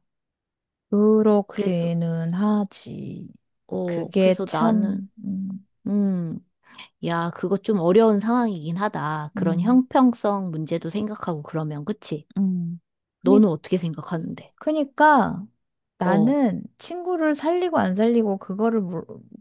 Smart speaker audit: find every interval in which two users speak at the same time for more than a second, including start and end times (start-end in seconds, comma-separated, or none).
3.8-5.1